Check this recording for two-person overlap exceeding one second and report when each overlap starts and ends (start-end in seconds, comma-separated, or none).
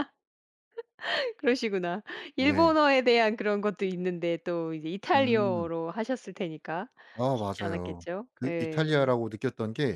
7.3-9.1